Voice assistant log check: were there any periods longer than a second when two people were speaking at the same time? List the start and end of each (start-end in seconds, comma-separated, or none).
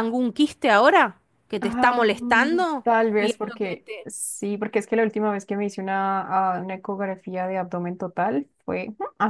1.6-4.1